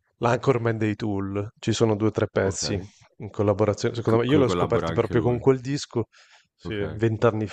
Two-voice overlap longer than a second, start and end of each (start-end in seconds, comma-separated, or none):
4.1-5.5